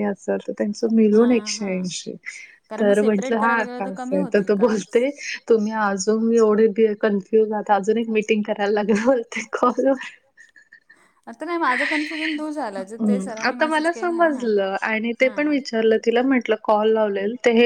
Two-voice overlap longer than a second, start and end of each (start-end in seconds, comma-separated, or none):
2.8-4.8